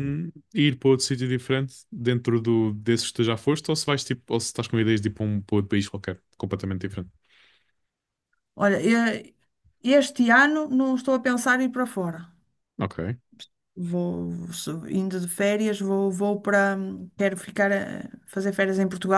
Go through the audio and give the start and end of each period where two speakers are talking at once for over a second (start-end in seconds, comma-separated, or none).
none